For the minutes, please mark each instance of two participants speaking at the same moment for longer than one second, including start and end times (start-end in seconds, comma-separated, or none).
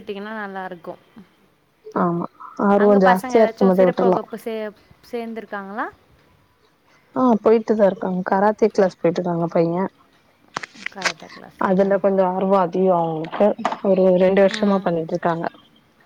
2.8-4.2